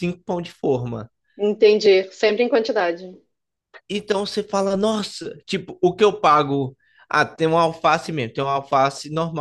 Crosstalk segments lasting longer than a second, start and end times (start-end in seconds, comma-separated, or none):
none